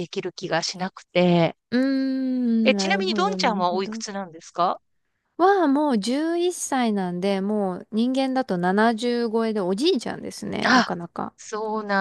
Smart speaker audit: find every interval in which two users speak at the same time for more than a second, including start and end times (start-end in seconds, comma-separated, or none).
2.6-4.0